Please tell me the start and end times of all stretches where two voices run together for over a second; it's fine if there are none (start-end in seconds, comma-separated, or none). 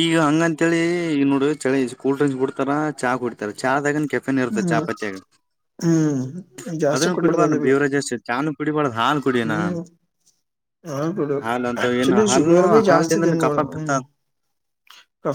11.8-13.9